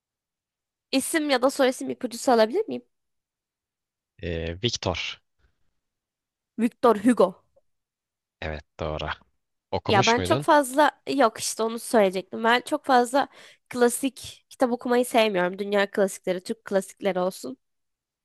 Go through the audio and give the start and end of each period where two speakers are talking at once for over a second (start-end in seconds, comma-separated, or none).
none